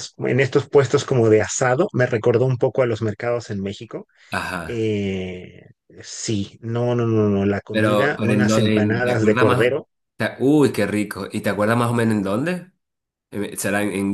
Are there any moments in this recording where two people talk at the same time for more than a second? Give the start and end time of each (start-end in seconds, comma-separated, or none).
7.7-9.7